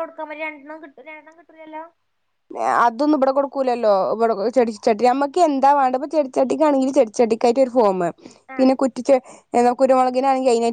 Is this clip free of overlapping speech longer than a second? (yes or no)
yes